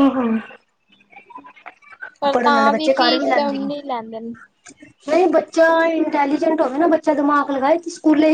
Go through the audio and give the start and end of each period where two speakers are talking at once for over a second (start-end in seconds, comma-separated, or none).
2.3-3.7